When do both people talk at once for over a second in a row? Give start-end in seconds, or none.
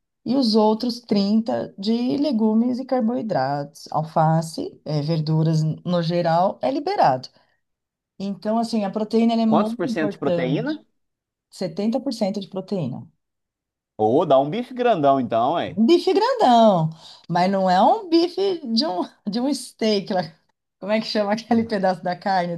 9.5-10.8